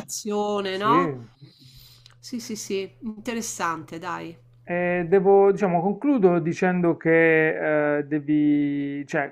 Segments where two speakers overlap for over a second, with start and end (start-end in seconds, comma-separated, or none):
none